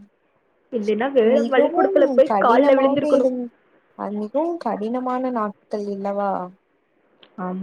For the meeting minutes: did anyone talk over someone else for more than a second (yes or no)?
yes